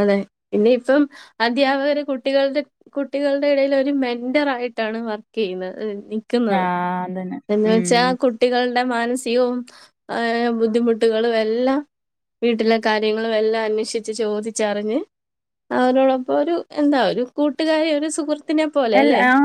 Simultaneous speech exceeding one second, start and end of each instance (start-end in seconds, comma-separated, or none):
none